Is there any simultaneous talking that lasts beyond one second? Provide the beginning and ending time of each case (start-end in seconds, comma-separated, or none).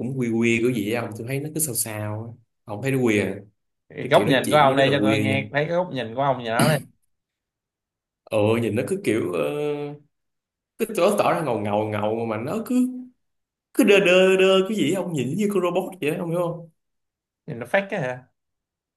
4.0-5.4